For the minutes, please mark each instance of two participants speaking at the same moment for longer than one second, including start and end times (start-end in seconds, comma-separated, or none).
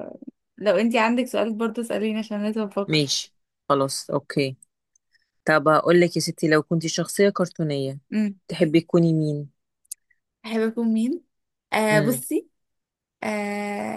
none